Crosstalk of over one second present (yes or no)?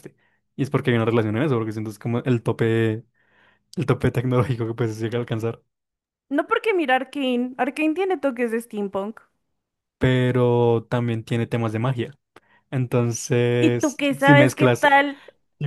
yes